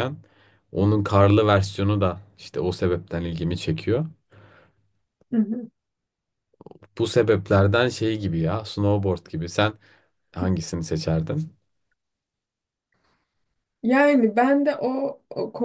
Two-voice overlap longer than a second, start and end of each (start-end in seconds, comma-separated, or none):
none